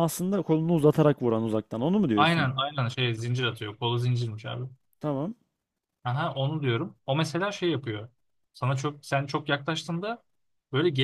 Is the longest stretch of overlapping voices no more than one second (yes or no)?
yes